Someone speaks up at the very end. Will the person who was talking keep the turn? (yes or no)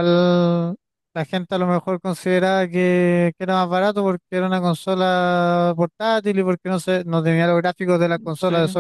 yes